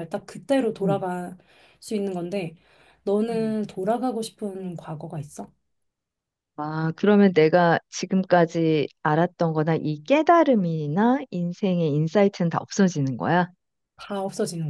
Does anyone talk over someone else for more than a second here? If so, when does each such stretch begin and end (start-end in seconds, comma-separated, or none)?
none